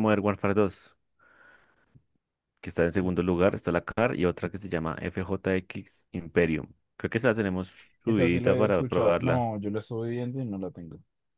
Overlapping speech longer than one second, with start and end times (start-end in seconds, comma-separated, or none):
8.1-9.5